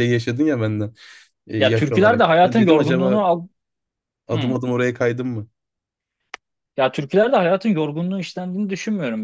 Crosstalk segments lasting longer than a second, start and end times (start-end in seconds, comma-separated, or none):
1.6-3.3